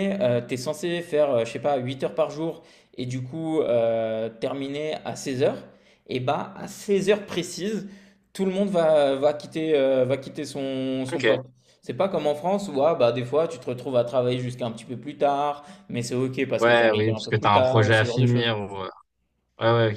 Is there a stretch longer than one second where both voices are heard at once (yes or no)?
yes